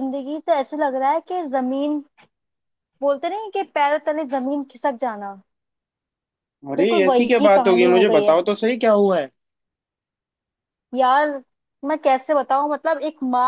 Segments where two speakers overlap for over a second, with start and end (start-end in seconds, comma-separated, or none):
6.8-8.4